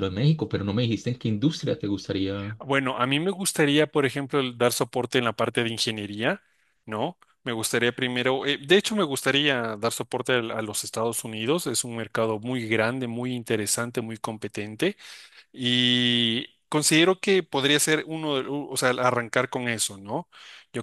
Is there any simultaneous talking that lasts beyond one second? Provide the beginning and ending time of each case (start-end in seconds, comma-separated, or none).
none